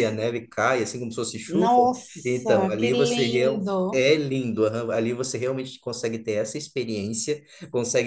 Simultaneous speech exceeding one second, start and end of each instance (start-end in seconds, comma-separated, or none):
1.5-4.1